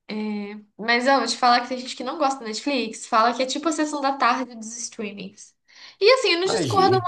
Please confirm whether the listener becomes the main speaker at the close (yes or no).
no